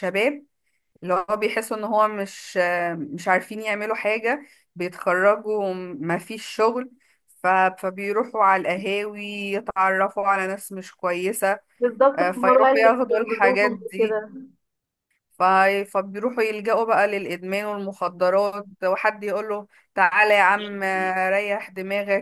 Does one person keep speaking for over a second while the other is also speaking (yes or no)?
yes